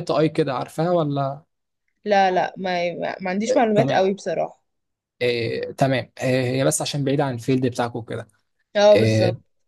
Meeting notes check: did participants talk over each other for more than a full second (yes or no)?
no